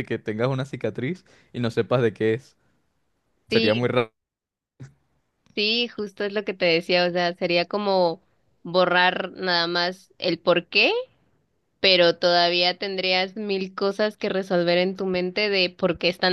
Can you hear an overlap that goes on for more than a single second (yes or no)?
no